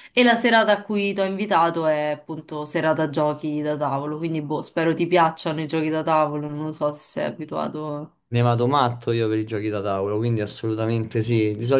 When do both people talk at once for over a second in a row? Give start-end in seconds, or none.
none